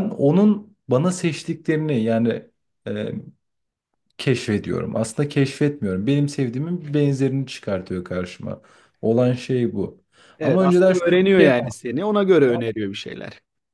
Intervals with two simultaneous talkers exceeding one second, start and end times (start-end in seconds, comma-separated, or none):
10.4-11.8